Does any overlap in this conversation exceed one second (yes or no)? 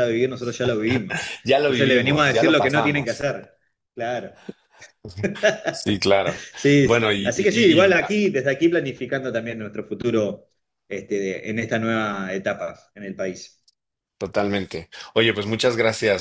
yes